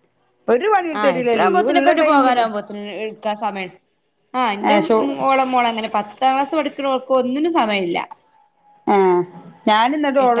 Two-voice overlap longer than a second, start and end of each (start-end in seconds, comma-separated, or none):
1.0-2.4